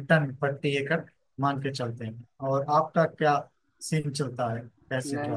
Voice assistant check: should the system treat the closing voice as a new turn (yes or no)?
yes